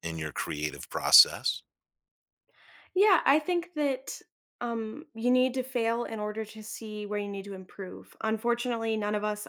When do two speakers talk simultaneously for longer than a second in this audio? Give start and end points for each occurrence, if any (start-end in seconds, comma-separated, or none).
none